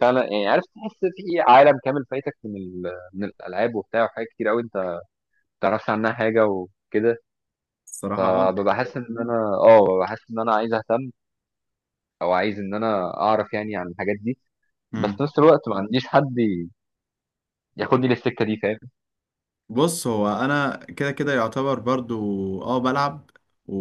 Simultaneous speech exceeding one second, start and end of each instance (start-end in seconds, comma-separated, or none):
none